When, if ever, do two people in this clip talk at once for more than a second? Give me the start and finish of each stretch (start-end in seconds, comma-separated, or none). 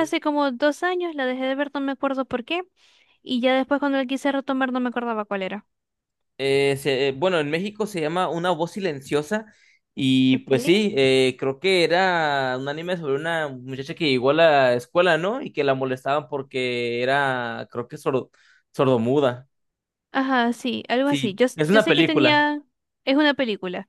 21.0-22.5